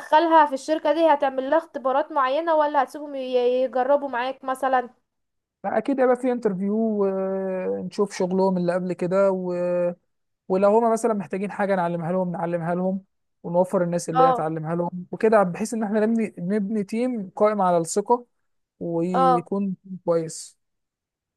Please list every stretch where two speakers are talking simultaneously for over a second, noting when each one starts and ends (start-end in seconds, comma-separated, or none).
none